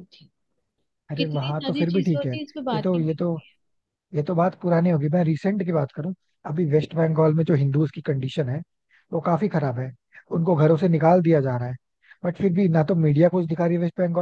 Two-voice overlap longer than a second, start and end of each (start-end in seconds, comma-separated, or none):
1.2-3.1